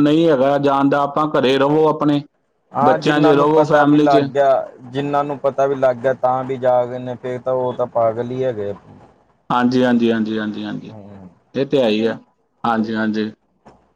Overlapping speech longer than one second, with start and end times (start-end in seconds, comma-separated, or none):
2.8-4.2